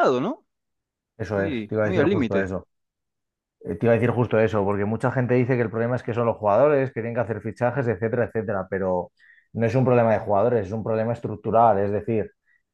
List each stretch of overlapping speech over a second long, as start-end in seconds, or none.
1.3-2.5